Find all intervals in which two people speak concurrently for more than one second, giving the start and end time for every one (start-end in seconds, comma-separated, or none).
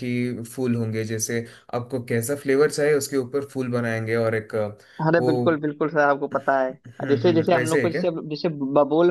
6.7-8.0